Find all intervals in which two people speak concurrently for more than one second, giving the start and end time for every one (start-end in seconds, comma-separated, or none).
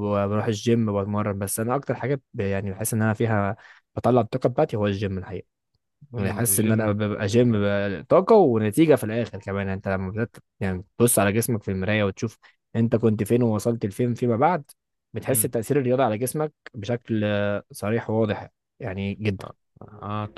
6.2-7.7